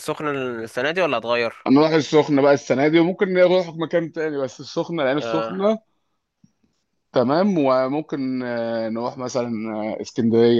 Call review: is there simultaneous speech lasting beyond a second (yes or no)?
no